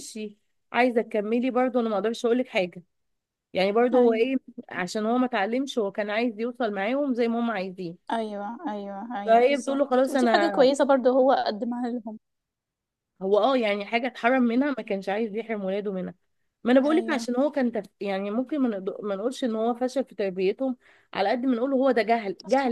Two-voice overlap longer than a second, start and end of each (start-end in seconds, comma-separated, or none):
9.2-10.7